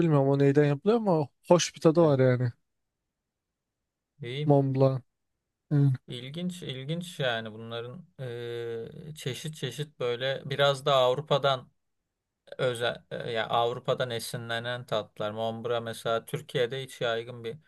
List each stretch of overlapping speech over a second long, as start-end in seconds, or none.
none